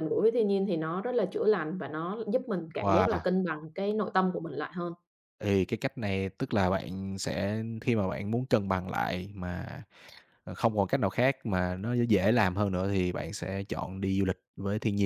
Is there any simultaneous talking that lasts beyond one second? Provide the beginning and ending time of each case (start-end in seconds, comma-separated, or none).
none